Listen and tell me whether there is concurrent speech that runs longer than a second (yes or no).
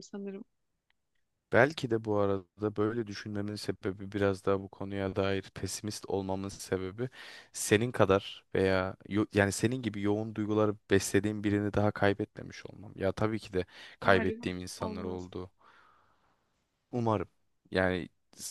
yes